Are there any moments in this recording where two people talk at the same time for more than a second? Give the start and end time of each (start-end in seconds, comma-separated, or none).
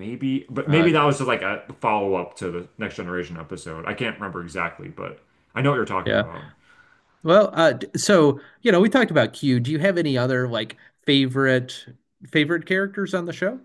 none